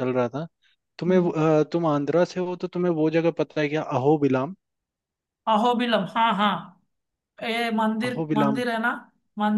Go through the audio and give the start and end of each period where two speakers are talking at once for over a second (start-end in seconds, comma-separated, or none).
none